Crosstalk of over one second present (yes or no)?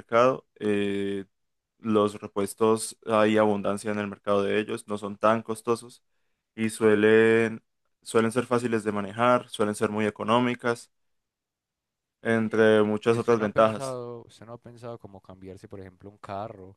yes